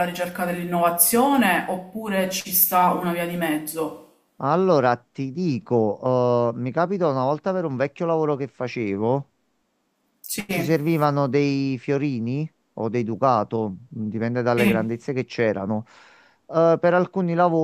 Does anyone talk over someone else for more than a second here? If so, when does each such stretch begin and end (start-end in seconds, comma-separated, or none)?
none